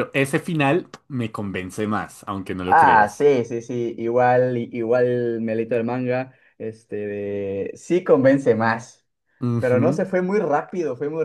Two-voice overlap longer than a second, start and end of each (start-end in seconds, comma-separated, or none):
none